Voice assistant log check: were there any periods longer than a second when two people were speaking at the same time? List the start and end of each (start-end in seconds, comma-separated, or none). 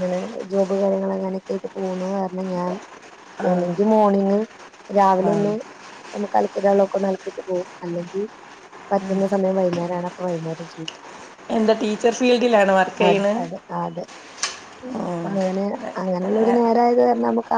none